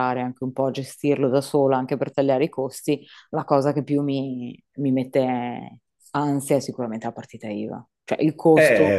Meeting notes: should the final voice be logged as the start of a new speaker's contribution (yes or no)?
yes